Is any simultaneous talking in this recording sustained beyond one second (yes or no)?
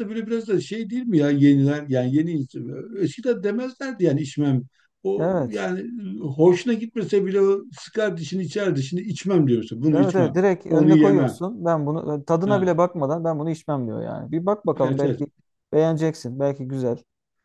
yes